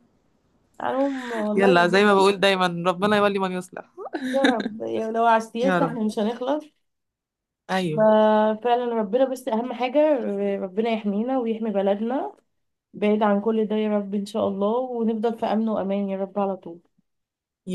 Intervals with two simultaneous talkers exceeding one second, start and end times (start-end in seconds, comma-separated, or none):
none